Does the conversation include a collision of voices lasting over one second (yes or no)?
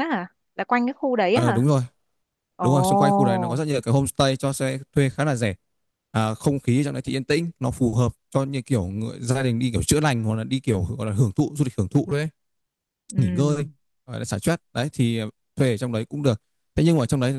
no